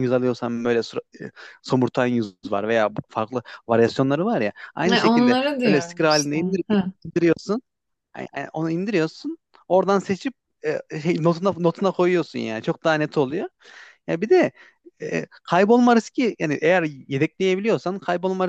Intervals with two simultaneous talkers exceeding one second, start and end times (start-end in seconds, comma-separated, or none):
4.8-6.6